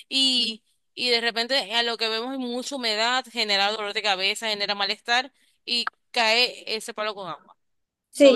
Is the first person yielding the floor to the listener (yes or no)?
yes